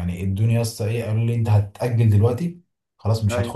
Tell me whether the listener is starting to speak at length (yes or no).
no